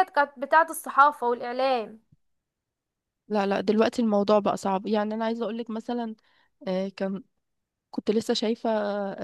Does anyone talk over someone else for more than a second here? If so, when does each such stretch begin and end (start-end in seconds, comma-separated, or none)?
none